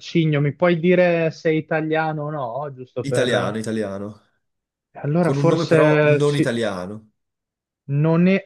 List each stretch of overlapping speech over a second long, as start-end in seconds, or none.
5.2-6.6